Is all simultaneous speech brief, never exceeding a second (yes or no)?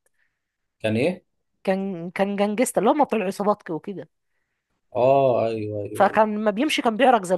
yes